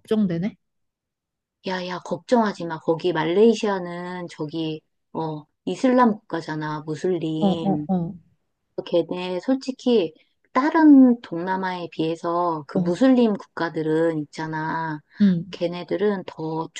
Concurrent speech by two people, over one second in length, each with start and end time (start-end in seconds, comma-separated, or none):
none